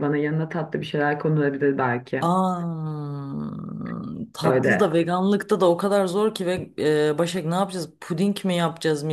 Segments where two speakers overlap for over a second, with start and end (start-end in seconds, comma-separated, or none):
none